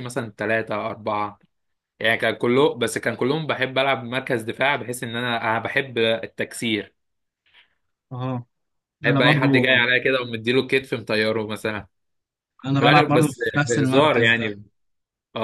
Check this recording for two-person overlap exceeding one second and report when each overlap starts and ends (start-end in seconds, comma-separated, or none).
12.8-14.5